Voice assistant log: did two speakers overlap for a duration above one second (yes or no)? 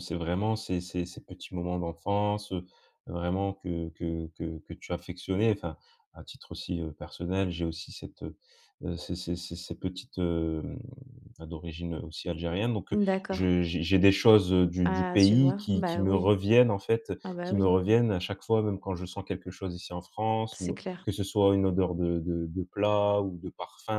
yes